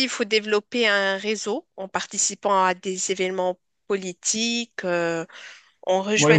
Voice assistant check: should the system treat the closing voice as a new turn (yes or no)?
yes